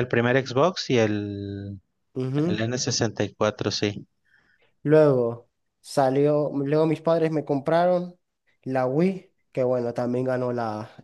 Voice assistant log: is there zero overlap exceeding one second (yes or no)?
yes